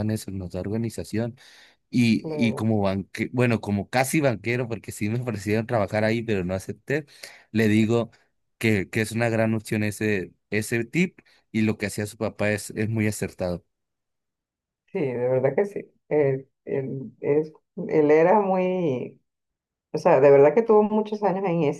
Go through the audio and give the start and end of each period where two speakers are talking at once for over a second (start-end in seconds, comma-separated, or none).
none